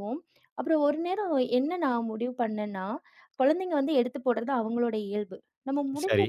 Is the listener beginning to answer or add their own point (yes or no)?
no